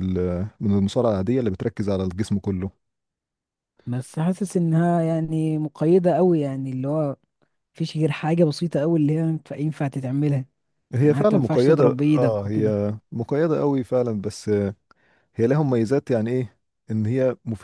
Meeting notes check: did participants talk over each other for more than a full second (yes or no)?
yes